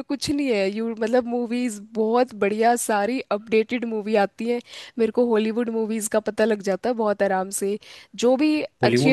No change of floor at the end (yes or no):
no